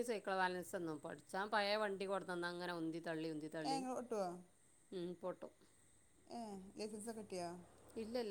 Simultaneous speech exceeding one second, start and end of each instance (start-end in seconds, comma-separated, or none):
none